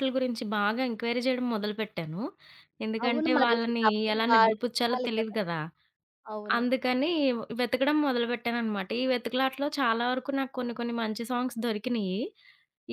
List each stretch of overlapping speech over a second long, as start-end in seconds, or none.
3.0-5.4